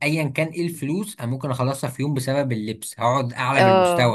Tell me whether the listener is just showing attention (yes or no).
yes